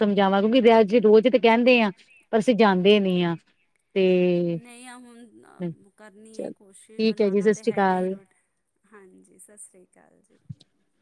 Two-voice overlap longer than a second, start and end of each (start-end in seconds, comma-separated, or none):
6.4-8.1